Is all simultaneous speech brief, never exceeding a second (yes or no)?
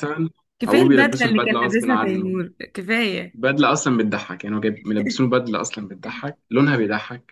no